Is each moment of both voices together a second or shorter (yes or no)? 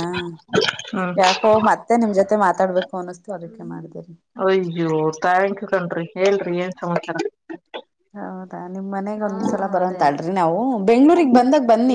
yes